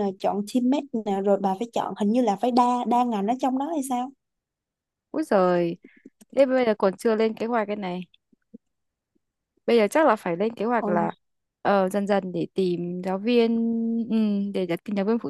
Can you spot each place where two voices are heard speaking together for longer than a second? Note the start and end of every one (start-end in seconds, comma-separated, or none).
none